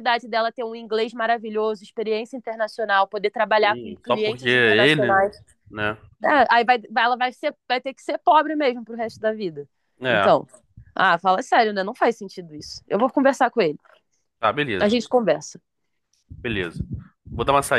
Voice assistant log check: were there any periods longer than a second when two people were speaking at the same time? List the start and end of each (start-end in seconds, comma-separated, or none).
3.6-5.2